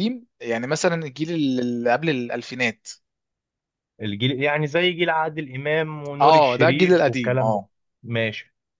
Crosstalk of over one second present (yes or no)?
yes